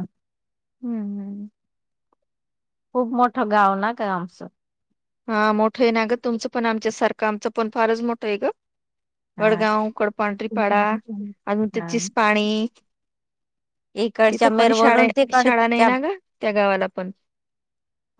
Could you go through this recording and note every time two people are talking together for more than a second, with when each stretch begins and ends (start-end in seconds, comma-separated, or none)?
14.3-15.9